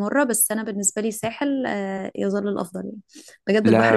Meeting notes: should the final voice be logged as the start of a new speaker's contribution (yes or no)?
no